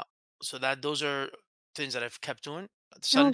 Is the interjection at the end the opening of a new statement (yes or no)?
no